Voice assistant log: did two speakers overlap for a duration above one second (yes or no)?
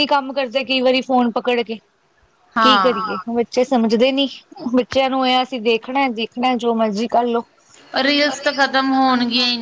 no